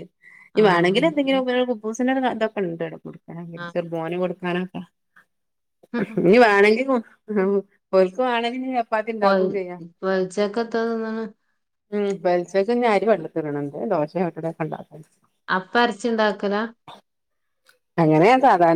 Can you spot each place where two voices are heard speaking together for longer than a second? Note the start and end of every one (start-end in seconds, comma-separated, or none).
none